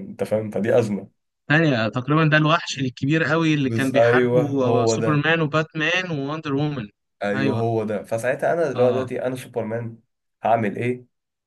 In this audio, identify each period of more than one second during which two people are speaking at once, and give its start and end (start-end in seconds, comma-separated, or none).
3.6-5.3